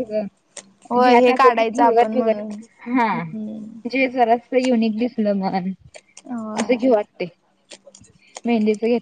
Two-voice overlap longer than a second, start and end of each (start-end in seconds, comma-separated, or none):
1.0-2.4